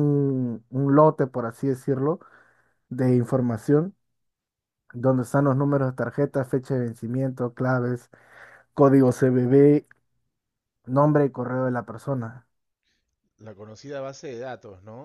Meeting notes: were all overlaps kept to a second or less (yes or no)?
yes